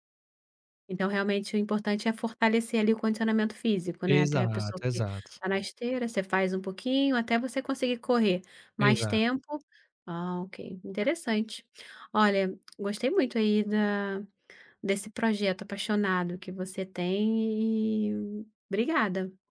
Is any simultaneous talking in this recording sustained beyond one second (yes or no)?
yes